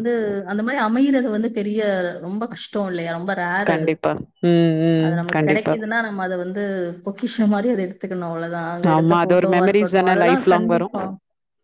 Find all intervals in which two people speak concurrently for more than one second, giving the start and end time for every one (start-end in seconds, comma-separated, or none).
8.9-10.9